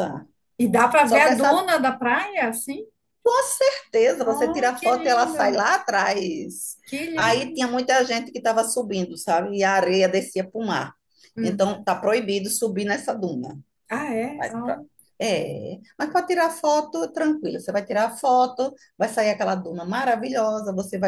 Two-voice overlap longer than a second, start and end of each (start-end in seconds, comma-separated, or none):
4.2-5.6